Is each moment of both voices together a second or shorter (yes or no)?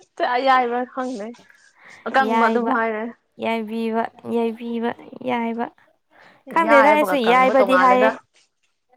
no